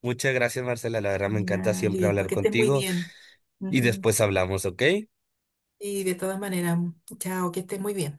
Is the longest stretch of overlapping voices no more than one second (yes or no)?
no